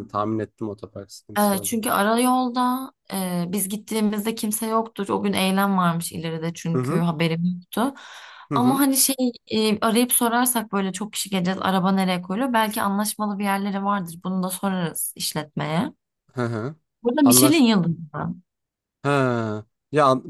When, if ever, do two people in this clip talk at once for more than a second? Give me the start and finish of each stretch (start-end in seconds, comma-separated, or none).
none